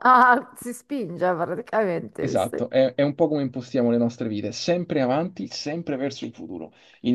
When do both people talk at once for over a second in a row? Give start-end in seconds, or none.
none